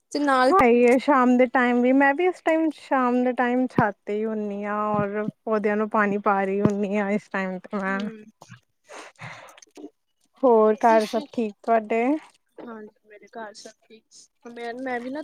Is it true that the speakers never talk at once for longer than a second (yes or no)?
yes